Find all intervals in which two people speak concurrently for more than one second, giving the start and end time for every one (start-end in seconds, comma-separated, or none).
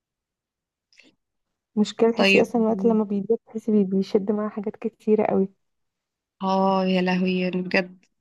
none